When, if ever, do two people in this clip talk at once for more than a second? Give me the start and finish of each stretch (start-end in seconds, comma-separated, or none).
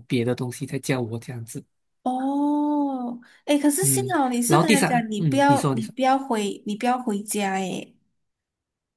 3.8-5.9